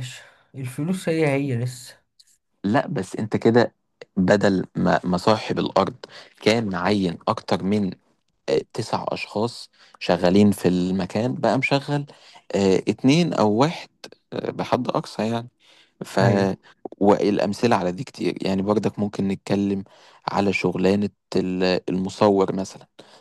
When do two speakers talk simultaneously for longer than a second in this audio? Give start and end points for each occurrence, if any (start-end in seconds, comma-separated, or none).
none